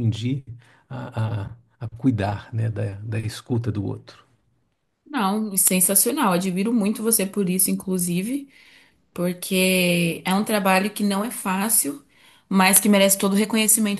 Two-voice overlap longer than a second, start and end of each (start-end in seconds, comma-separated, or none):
none